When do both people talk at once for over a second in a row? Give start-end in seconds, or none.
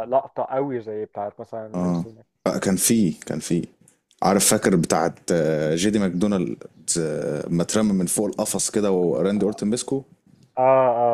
none